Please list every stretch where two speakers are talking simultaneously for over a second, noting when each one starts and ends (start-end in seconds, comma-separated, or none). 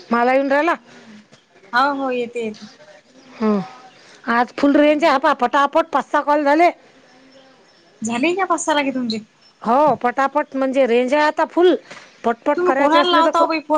none